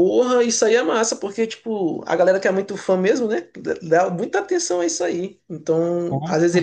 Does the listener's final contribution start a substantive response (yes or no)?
no